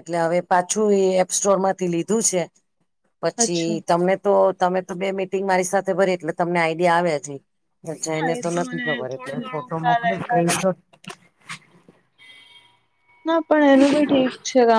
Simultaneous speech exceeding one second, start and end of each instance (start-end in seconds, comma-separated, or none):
8.1-10.3